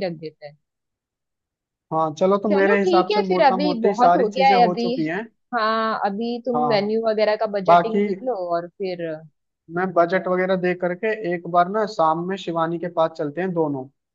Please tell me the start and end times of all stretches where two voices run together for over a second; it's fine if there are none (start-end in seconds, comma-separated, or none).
2.5-4.8